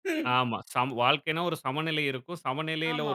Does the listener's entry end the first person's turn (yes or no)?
no